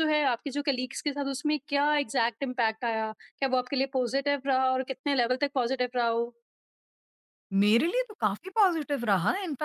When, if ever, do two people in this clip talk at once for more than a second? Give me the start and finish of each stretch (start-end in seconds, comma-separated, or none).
none